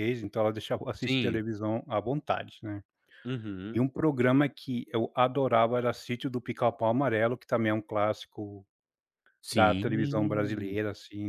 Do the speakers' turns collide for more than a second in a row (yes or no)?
yes